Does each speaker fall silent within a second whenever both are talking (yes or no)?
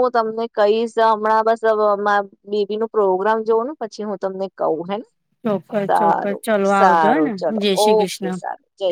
no